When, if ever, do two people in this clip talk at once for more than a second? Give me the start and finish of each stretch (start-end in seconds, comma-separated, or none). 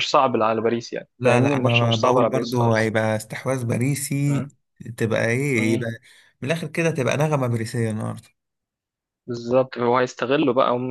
1.2-2.9